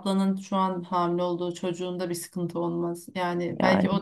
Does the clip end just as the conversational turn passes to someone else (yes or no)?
no